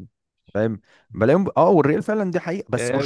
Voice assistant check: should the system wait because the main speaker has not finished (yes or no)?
no